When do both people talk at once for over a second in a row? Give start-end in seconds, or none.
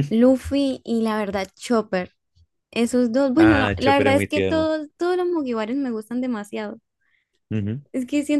3.4-4.7